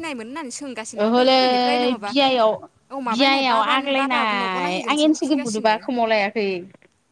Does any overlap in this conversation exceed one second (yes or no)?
yes